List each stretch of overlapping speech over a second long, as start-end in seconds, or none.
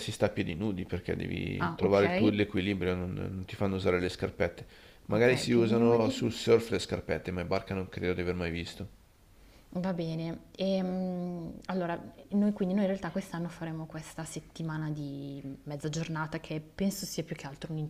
5.1-6.4